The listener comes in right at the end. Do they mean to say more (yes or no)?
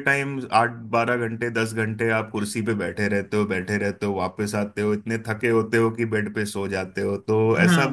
yes